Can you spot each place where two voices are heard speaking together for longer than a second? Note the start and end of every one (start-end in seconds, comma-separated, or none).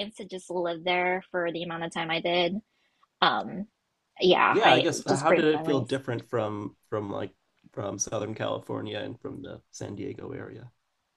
4.5-6.0